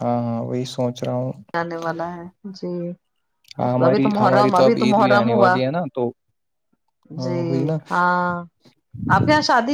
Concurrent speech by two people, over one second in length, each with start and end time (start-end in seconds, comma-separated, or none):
3.6-5.5